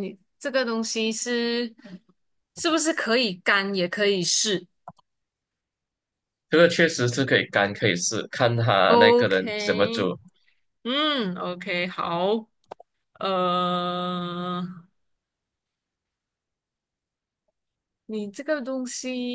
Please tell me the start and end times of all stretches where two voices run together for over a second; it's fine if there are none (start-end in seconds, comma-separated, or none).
8.9-10.1